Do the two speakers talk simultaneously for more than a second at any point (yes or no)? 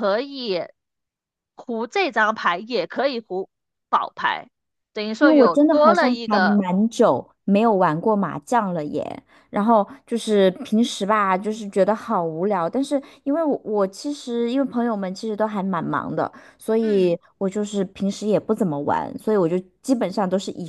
yes